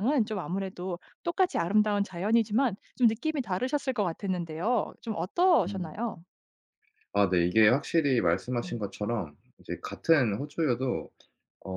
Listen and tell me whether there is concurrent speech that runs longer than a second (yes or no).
no